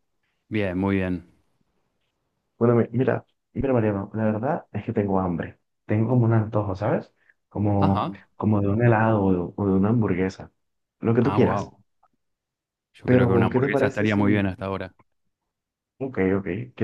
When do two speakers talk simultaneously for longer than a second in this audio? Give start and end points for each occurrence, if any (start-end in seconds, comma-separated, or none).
13.1-14.4